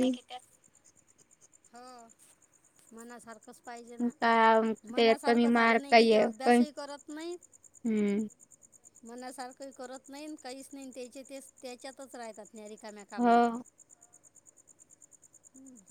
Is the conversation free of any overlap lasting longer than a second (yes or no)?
no